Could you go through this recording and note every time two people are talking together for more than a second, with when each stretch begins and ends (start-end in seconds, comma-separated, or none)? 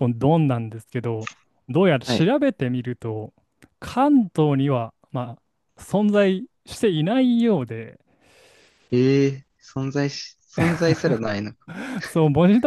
none